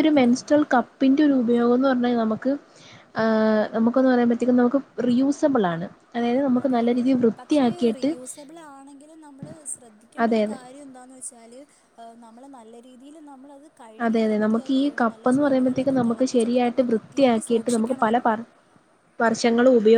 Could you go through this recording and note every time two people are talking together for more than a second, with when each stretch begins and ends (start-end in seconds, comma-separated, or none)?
14.0-18.3